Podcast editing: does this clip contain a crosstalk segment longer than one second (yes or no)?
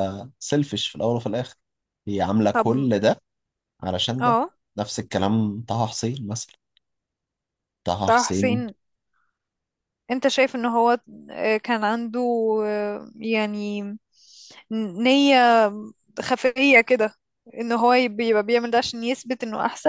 no